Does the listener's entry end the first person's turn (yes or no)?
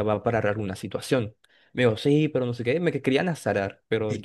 yes